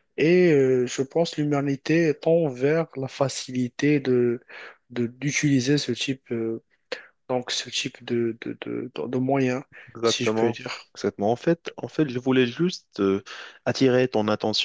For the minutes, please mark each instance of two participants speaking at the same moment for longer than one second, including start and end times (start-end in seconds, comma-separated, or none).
none